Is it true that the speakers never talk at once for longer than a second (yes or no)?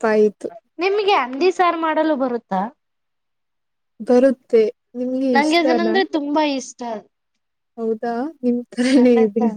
yes